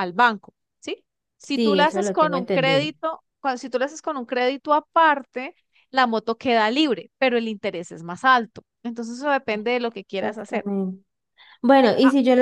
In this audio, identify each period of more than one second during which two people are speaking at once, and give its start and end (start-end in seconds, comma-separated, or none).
1.5-2.9